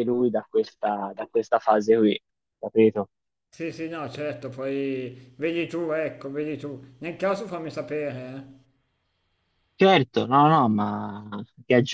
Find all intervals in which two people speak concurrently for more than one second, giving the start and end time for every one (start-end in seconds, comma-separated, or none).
none